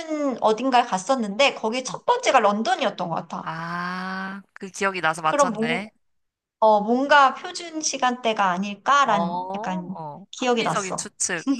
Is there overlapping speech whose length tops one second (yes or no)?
yes